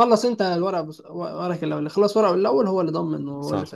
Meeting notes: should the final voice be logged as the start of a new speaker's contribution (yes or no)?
yes